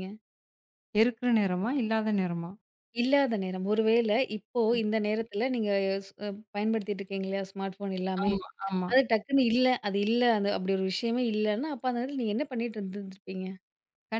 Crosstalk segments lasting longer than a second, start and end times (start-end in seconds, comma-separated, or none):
none